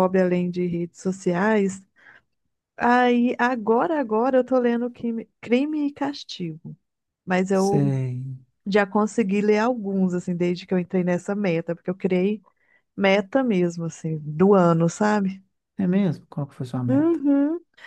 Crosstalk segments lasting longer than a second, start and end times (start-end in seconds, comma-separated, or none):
none